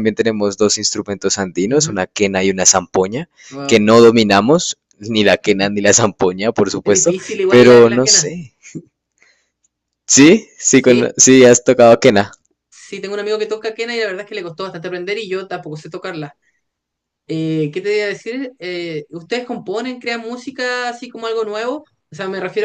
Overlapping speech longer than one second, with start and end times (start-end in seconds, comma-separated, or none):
6.8-8.3